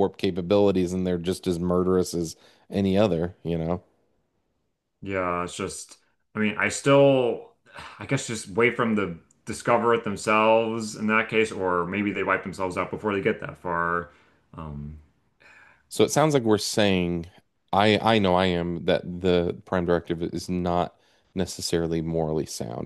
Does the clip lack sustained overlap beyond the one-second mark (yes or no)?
yes